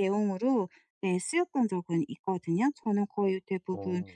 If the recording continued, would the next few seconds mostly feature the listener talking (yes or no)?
no